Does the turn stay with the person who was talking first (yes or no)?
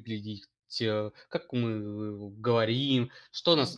yes